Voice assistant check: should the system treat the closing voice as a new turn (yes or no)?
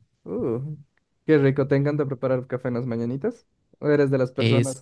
no